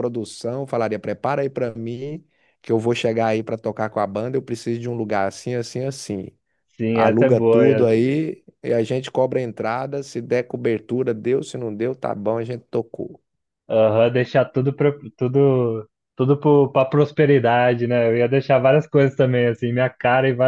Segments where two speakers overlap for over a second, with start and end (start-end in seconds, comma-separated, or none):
6.9-8.2